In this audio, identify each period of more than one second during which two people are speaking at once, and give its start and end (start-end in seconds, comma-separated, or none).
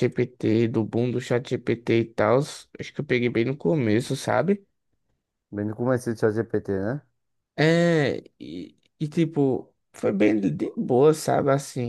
none